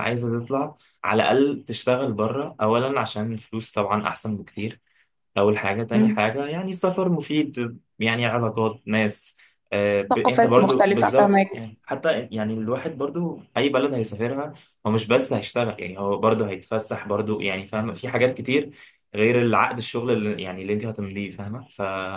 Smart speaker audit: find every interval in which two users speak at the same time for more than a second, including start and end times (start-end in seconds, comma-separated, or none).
10.1-11.5